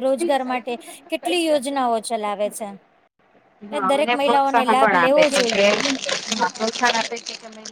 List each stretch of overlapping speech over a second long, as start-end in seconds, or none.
3.7-5.6